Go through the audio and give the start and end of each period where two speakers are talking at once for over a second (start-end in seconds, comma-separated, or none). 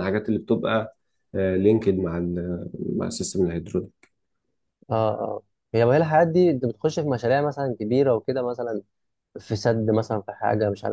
none